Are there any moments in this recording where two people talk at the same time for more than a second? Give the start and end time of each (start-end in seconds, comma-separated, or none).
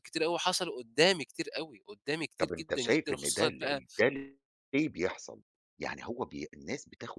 2.4-3.8